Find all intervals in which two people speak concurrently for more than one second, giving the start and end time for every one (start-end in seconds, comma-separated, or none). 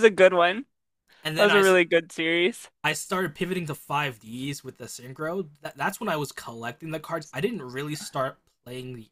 none